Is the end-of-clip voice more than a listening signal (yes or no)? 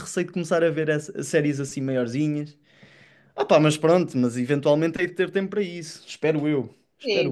yes